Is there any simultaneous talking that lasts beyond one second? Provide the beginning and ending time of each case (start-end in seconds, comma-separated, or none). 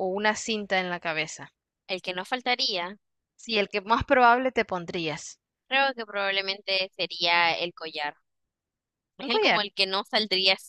none